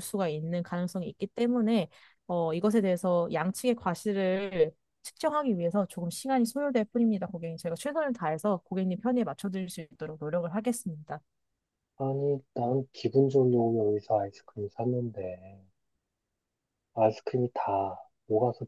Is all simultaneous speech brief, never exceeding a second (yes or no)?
yes